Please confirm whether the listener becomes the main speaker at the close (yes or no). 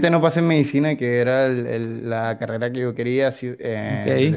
no